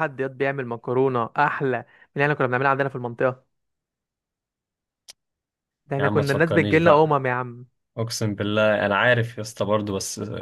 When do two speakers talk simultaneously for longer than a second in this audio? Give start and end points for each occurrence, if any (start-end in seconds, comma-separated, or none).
6.0-7.2